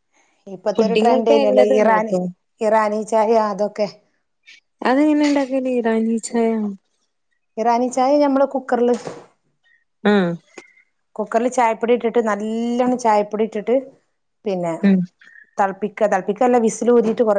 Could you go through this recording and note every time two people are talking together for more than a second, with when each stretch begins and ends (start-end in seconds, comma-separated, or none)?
0.8-2.1